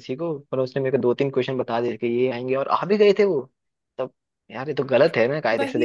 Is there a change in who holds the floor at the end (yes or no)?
yes